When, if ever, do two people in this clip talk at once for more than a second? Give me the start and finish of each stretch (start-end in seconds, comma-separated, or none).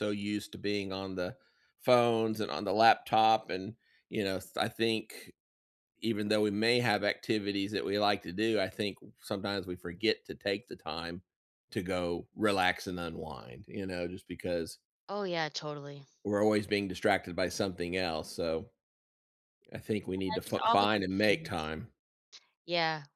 19.9-21.7